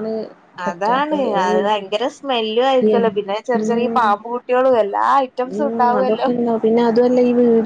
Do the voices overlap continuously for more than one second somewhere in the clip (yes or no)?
no